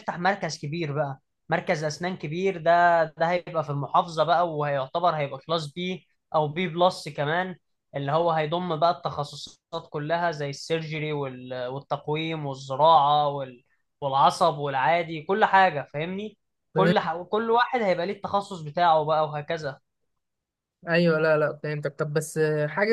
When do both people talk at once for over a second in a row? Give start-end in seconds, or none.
none